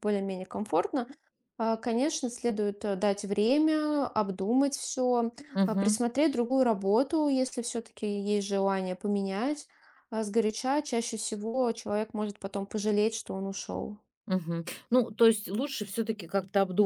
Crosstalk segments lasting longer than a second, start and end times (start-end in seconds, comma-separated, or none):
none